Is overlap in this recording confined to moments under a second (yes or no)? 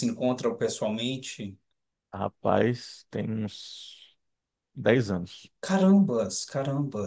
yes